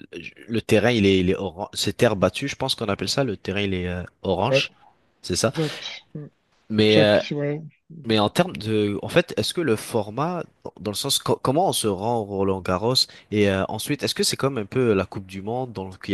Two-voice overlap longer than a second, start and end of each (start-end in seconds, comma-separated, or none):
none